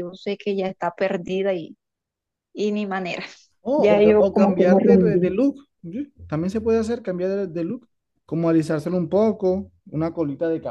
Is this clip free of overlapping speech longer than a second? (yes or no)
no